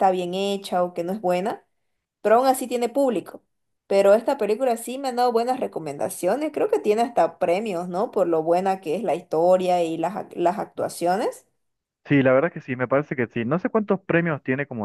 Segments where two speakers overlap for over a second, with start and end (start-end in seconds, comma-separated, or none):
none